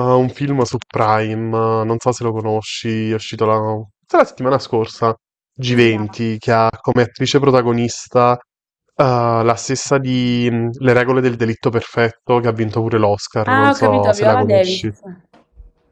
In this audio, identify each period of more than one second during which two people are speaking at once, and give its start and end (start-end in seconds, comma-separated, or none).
13.5-14.9